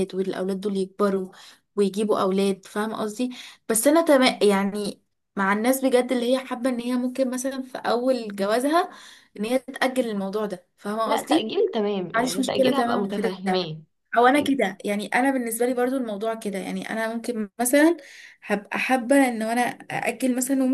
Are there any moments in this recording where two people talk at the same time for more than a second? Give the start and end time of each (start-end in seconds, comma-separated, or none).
12.1-13.7